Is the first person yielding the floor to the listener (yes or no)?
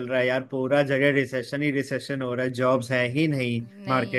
no